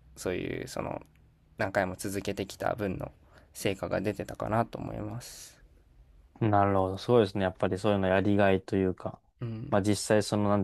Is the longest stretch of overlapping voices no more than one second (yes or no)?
yes